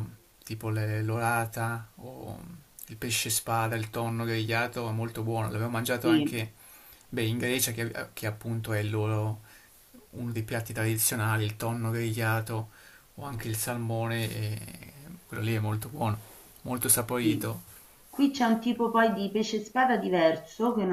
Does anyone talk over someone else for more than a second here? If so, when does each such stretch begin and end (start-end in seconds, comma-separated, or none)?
none